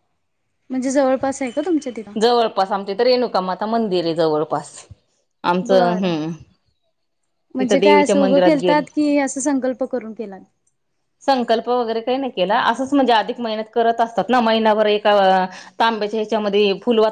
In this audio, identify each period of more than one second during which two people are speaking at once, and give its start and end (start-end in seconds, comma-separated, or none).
7.6-8.8